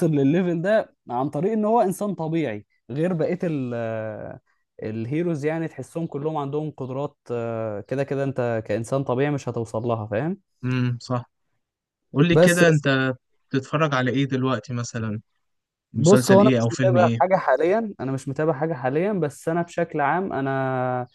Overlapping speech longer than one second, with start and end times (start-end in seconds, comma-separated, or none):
15.9-17.2